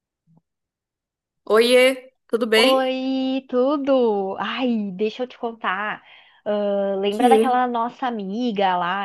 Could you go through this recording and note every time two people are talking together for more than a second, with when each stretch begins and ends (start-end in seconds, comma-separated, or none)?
none